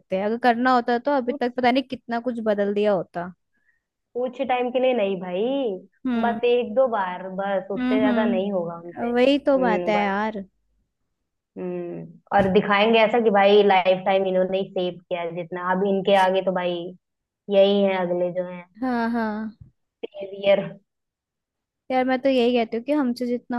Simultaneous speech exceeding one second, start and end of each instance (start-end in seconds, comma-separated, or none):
7.8-10.1